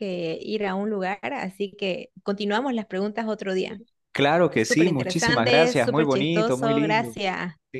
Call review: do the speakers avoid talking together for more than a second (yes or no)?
no